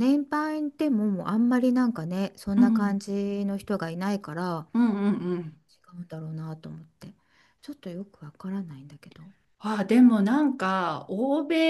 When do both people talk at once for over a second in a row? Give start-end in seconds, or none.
none